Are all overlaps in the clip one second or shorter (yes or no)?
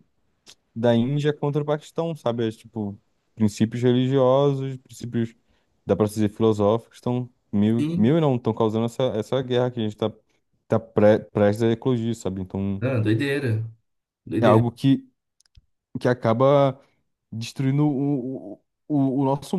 yes